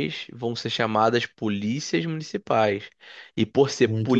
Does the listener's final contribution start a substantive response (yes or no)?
no